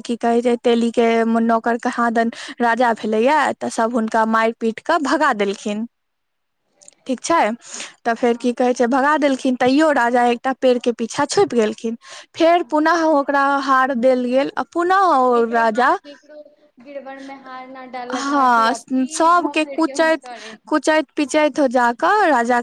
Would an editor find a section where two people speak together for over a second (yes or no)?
no